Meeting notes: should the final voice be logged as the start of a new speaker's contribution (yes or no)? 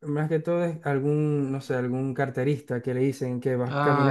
no